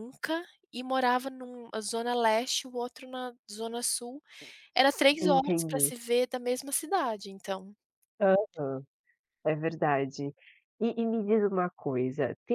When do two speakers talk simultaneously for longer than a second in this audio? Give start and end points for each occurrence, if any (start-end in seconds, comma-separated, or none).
none